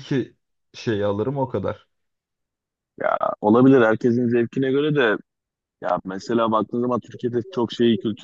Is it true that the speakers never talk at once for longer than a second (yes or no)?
yes